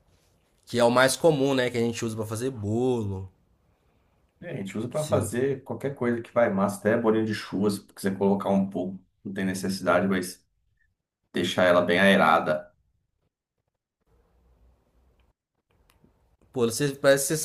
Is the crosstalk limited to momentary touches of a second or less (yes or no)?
yes